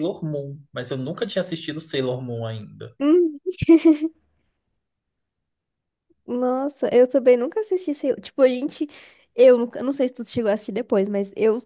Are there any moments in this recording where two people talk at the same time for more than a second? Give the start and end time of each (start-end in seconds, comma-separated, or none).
none